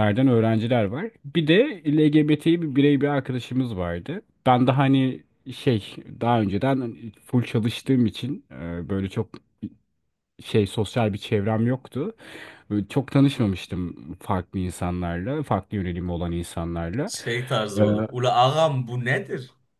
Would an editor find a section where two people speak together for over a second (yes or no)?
no